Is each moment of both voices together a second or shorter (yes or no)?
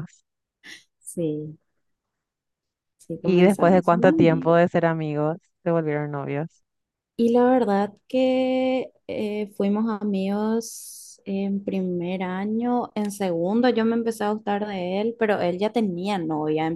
no